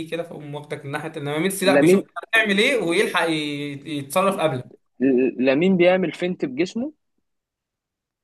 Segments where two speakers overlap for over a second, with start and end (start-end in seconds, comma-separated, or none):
none